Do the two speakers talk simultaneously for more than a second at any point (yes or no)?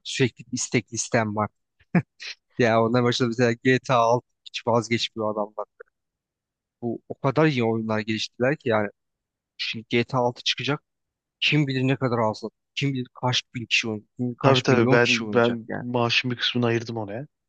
yes